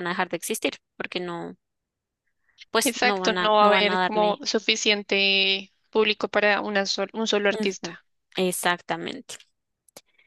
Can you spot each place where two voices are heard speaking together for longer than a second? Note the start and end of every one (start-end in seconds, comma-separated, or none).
2.8-4.4